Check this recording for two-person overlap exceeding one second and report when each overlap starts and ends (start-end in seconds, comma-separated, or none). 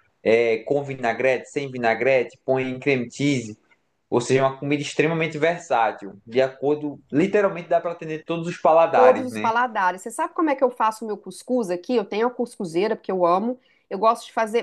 none